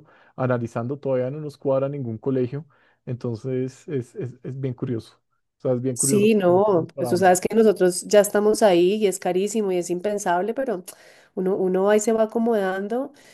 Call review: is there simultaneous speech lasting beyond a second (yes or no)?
yes